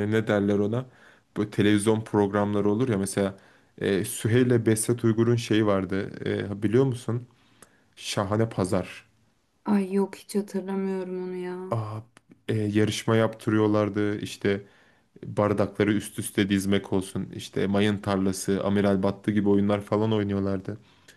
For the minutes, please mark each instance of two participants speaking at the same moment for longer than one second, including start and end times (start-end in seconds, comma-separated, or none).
none